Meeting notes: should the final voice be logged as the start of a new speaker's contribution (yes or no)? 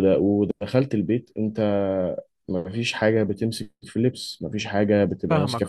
yes